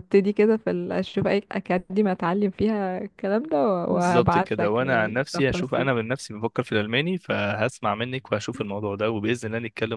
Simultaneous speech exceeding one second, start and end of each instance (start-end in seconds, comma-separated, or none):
3.9-5.9